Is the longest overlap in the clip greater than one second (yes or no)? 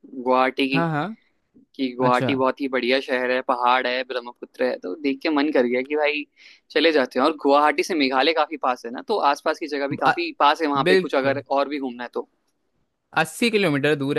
no